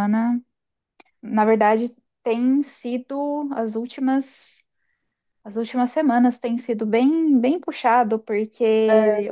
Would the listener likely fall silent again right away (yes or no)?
yes